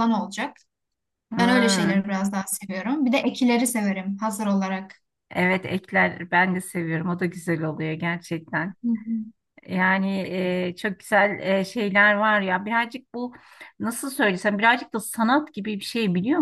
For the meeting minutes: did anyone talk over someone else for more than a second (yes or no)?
no